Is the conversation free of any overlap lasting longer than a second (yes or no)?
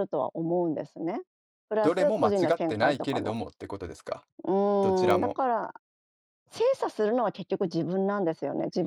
no